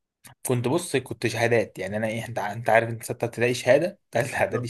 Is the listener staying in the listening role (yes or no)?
no